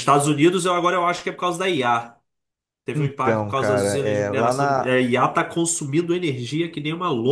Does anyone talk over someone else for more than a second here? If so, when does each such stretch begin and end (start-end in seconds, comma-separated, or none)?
3.0-4.9